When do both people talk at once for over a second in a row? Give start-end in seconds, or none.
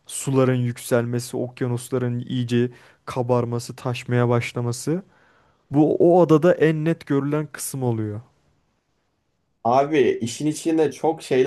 none